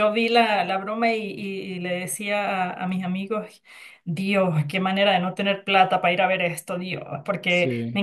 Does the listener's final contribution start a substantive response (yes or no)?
no